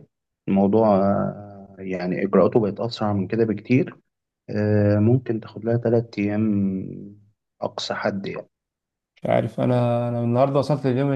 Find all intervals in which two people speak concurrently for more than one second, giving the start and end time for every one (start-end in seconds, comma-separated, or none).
none